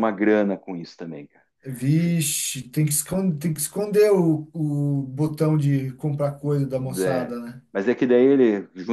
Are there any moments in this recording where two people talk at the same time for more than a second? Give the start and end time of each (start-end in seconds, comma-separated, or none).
none